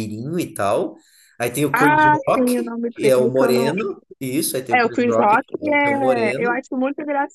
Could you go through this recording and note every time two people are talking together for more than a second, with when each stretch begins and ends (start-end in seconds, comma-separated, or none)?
1.7-3.7, 4.7-6.6